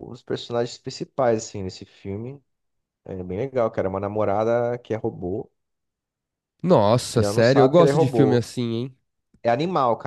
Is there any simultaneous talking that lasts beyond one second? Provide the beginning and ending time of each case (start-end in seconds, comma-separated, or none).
7.1-8.4